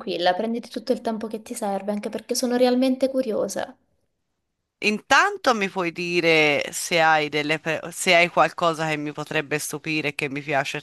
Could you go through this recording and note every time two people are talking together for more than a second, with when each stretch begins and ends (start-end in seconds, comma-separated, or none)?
none